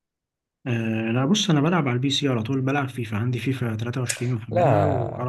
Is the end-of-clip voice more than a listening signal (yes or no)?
yes